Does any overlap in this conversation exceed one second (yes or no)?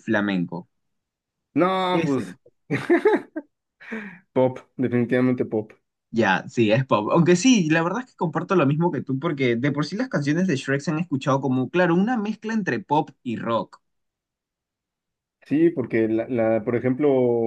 no